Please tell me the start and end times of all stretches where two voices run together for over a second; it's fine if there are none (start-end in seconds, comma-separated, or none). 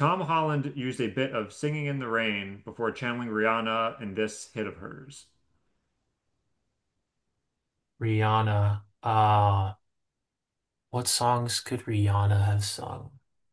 none